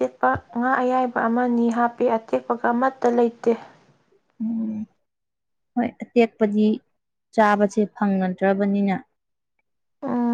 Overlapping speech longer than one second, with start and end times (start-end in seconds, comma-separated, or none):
none